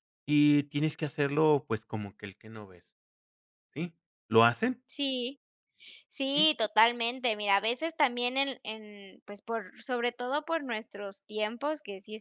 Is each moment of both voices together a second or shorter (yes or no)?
yes